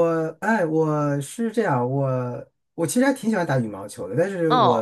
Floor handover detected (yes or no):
no